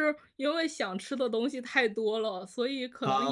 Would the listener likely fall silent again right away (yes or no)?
yes